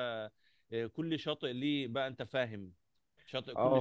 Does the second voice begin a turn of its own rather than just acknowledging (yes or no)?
no